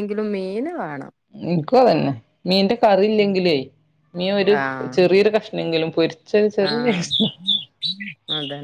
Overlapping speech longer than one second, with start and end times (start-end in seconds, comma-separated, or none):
none